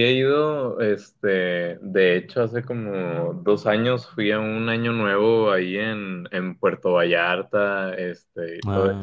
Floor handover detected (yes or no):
no